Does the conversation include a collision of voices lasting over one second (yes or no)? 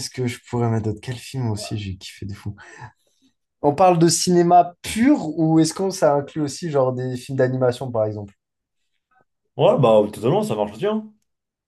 no